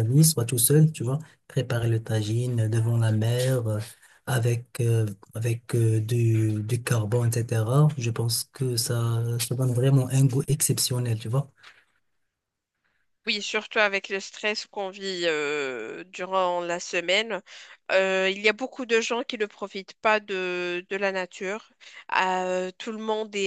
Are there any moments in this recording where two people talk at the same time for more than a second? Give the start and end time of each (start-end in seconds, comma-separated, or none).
none